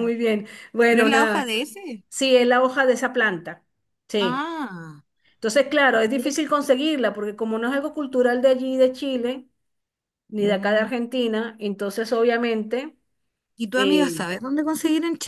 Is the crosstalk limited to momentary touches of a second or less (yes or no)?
yes